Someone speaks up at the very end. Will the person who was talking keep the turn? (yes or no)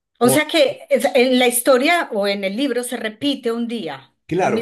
no